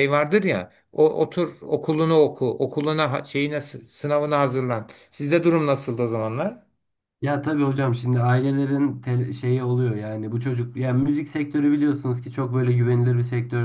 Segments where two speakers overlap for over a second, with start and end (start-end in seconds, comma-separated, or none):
none